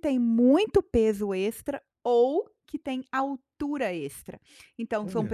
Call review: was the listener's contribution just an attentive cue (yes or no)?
yes